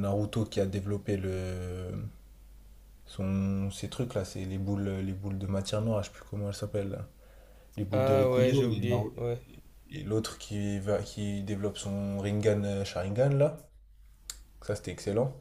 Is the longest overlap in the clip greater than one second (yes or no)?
yes